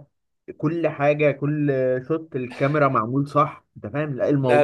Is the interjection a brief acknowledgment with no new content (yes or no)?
no